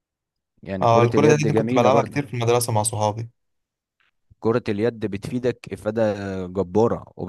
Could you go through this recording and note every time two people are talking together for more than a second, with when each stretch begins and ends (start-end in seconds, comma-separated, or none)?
0.8-2.3